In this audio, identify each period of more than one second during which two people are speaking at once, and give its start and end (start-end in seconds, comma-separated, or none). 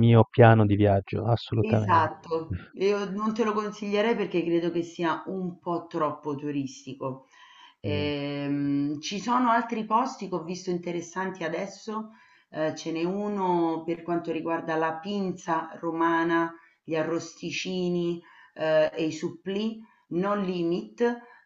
none